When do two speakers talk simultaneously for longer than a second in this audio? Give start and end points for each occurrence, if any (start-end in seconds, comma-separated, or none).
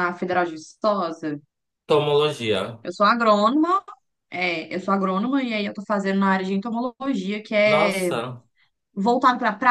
none